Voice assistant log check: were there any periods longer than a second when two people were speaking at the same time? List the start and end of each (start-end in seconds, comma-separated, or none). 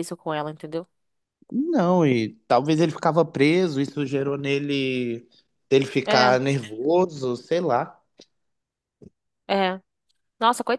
none